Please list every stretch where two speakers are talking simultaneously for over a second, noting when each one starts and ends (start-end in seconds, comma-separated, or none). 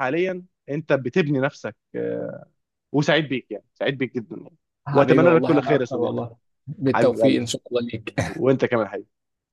4.9-6.2